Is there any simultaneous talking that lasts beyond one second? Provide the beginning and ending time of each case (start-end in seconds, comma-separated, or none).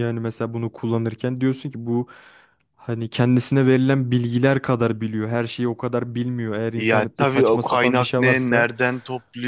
6.8-8.7